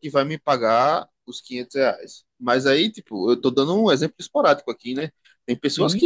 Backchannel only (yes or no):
yes